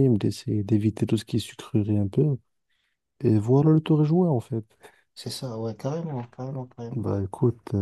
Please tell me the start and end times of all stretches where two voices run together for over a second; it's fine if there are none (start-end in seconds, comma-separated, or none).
none